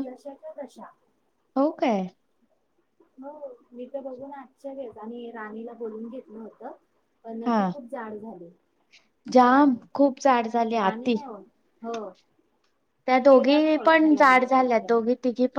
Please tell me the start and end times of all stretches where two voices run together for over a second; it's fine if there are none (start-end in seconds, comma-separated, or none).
13.3-14.9